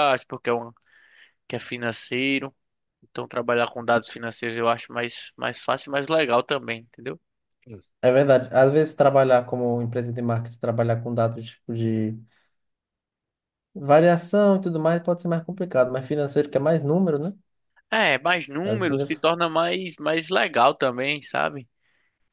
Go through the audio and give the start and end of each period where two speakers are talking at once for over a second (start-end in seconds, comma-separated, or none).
none